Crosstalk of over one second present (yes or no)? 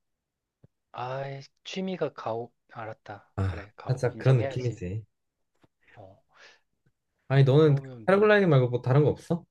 yes